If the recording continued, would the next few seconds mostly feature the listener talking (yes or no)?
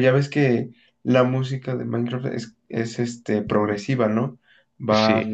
no